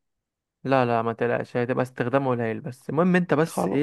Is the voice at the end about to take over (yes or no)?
no